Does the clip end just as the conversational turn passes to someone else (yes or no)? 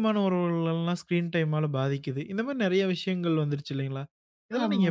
no